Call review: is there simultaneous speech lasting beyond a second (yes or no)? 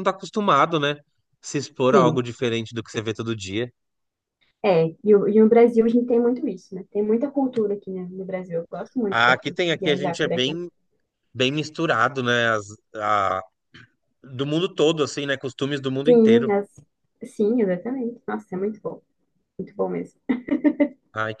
yes